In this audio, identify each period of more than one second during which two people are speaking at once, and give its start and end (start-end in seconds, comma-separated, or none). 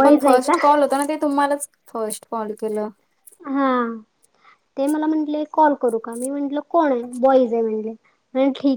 none